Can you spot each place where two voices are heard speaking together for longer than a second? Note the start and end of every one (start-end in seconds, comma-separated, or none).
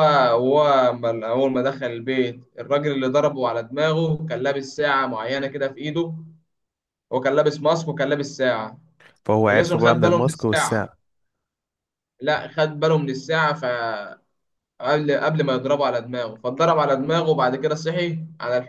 9.5-10.8